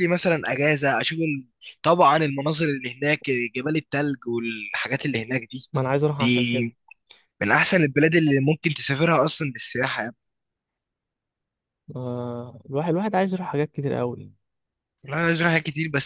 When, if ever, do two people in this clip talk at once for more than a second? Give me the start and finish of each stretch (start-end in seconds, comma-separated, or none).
none